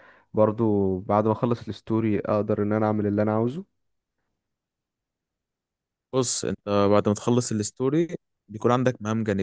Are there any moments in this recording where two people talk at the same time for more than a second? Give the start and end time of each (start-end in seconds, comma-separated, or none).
none